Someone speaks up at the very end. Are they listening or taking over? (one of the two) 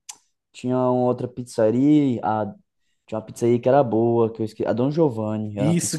taking over